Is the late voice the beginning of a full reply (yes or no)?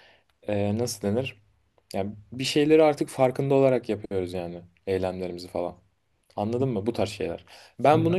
no